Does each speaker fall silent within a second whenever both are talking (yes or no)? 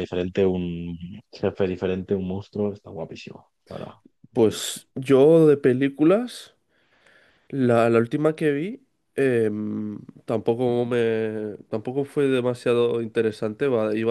yes